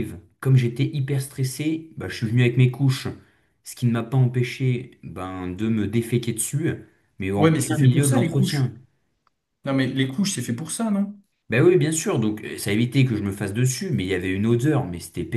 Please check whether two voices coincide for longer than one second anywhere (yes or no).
yes